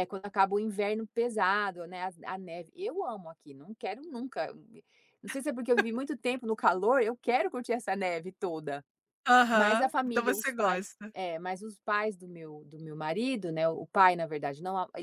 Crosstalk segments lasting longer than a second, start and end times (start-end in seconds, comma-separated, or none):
9.5-11.1